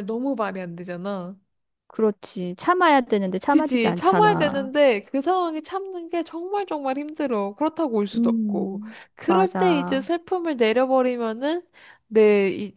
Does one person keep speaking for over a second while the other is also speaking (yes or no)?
yes